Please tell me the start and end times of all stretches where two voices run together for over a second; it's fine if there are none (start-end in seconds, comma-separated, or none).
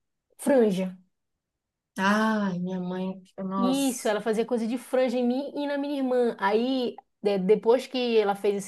none